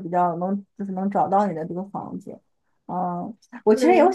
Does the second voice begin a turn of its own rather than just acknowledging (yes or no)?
no